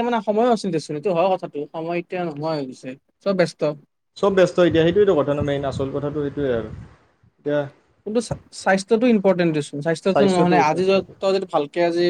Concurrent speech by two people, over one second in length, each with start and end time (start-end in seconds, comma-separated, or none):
10.1-11.3